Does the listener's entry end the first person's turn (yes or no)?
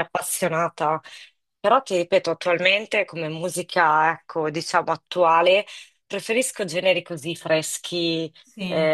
no